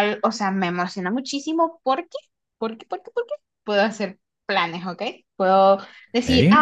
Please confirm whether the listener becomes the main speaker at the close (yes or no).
no